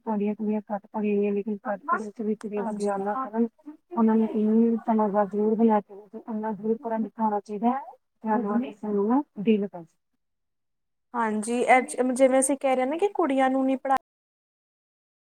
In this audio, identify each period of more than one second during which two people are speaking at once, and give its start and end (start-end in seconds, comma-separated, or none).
none